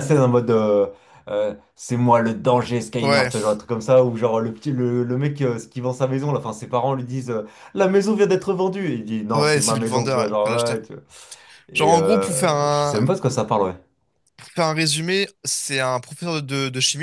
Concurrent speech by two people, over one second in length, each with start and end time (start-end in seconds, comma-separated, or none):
9.3-10.8, 11.7-13.0